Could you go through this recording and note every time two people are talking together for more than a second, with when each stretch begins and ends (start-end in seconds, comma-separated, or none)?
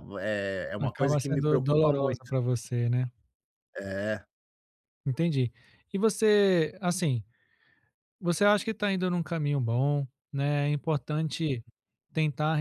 0.8-2.3